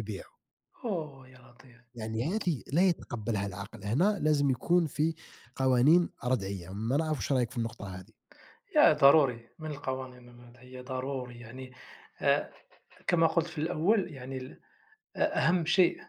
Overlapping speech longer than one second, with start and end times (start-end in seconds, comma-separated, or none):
none